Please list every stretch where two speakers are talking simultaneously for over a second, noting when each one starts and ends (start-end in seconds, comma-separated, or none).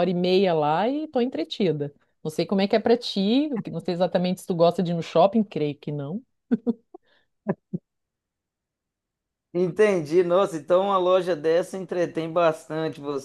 none